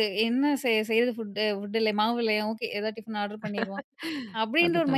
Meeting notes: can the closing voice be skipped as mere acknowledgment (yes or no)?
yes